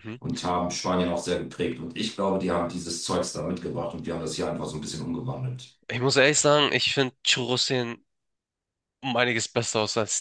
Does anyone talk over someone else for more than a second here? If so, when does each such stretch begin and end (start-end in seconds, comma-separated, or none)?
none